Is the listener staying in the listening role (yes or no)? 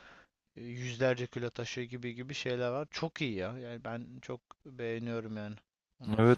no